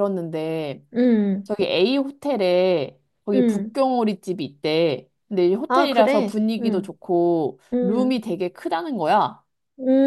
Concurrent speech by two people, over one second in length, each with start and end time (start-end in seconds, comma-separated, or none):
5.7-6.9